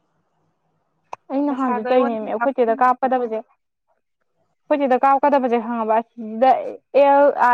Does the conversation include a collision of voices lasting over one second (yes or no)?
yes